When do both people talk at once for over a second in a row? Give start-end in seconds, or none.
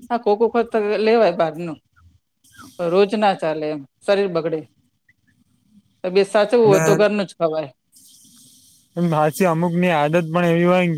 none